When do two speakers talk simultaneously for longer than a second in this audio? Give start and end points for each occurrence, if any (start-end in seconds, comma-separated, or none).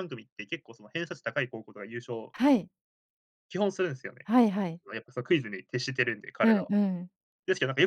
none